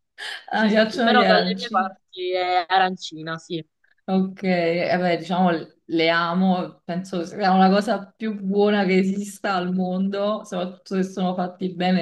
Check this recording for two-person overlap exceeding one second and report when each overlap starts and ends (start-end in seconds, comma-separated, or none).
0.5-1.9